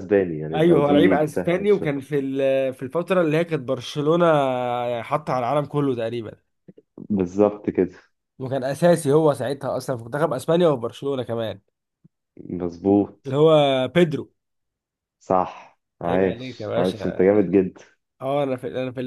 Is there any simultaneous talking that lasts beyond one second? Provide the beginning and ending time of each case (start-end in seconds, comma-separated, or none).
0.5-2.0, 16.1-17.2